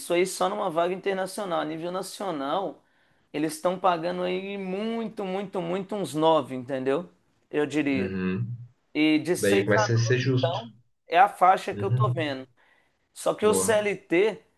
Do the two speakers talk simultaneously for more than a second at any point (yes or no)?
yes